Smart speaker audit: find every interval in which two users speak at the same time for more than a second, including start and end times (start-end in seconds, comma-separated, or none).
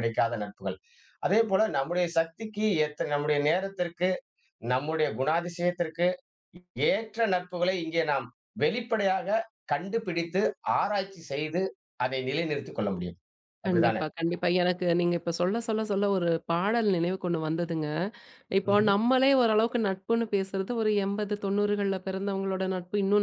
none